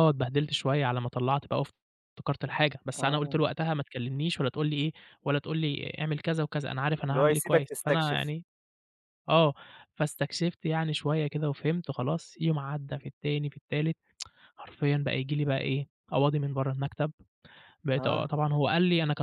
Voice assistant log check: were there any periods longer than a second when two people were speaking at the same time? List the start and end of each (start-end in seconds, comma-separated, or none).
7.1-8.3